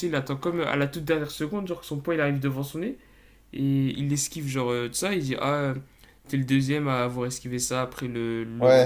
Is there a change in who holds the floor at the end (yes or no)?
yes